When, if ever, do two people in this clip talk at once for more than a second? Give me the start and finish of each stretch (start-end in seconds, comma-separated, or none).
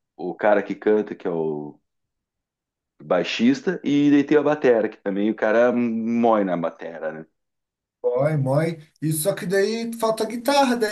none